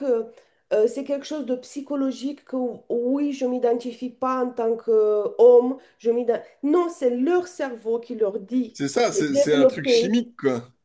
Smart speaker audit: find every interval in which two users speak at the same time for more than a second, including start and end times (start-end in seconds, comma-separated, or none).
8.7-10.2